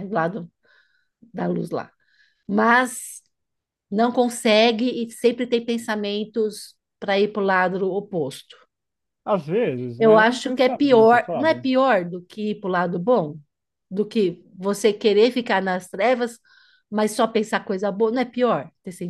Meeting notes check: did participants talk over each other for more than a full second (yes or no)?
yes